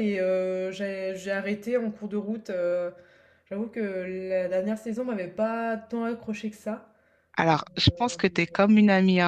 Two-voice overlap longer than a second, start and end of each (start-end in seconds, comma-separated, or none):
none